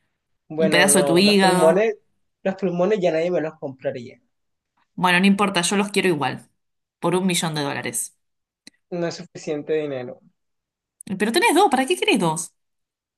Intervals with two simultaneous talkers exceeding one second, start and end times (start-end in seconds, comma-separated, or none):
0.6-1.9